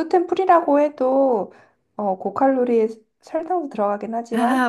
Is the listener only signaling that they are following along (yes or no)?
yes